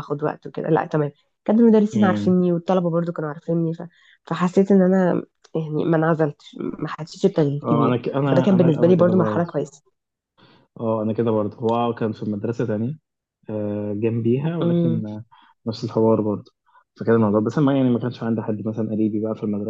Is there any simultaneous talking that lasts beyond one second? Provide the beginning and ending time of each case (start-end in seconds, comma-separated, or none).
7.6-9.5